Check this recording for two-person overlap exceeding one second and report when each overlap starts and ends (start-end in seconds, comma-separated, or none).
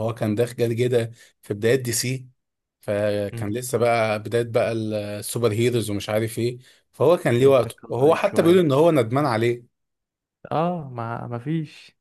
7.4-8.6